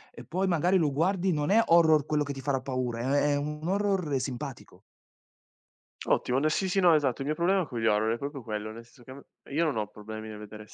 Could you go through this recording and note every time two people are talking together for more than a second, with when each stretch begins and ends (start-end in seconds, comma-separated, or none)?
none